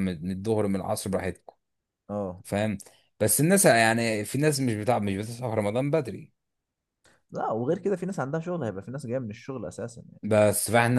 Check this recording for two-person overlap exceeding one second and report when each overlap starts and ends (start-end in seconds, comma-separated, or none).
none